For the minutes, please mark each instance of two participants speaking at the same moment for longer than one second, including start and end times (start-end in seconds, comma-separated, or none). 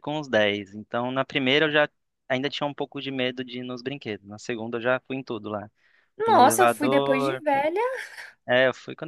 6.2-7.4